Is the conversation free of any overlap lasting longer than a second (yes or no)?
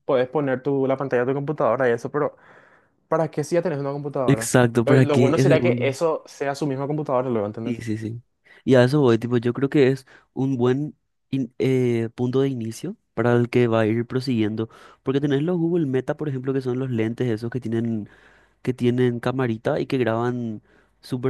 no